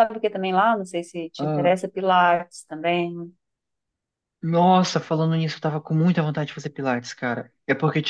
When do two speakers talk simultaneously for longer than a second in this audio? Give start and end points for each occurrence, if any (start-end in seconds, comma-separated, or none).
none